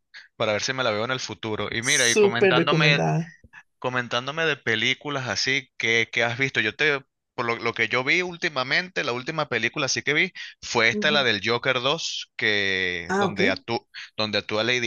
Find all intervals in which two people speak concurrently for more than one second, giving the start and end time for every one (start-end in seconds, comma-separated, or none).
1.8-3.0